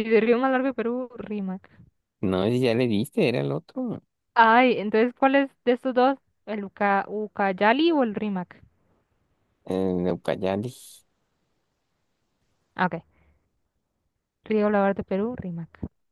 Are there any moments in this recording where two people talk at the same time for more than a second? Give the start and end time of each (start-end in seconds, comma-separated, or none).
none